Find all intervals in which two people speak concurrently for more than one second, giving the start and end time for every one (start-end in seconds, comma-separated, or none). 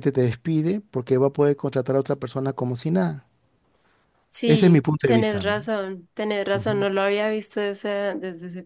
4.5-5.7